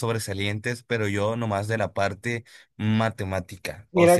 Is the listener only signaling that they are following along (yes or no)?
no